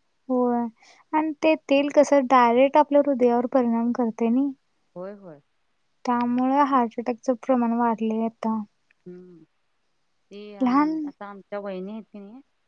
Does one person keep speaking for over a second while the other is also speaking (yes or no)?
no